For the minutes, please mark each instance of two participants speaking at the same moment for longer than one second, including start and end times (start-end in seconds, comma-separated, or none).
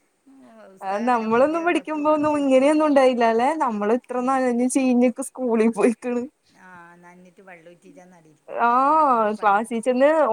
0.9-2.7